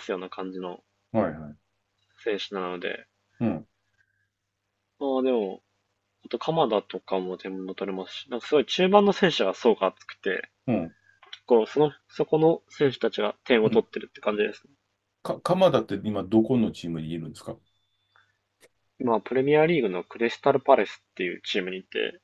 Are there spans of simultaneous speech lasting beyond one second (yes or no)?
no